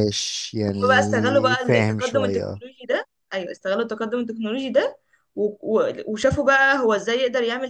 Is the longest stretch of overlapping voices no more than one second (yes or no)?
no